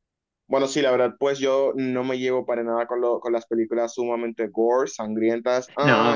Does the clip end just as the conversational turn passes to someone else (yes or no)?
no